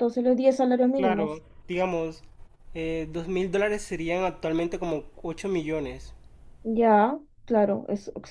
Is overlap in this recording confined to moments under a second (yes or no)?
yes